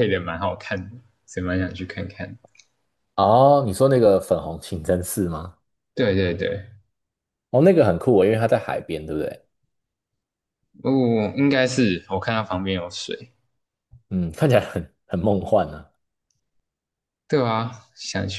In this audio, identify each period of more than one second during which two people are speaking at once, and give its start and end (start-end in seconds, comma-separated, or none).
none